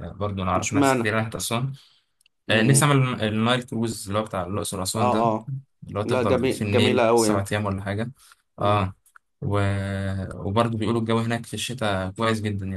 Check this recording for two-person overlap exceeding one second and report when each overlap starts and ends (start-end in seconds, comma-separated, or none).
6.0-7.5